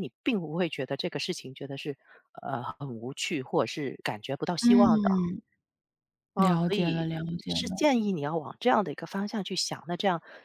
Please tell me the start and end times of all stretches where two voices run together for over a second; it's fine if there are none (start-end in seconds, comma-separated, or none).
6.3-7.9